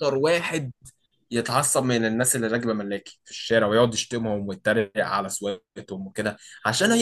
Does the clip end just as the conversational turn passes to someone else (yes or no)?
no